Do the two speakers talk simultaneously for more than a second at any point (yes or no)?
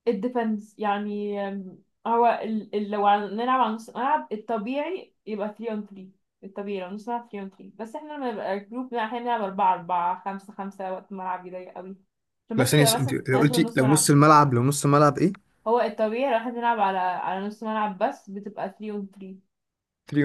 yes